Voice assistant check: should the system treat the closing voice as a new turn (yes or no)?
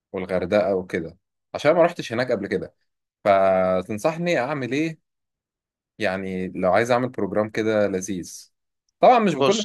no